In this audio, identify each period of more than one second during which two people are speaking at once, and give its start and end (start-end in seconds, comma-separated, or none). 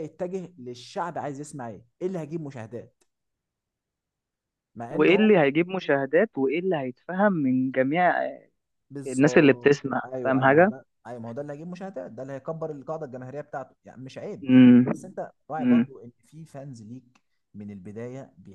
9.1-10.7